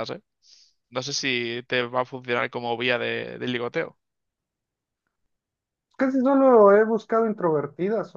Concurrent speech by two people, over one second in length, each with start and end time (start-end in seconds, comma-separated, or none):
none